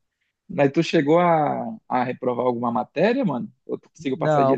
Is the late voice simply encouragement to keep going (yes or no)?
no